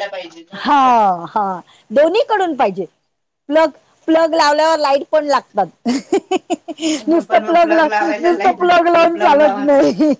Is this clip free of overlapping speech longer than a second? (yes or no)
no